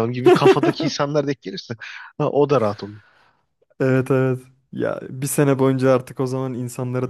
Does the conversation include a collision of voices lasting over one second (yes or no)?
no